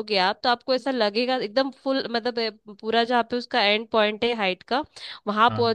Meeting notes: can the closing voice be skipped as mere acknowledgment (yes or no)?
yes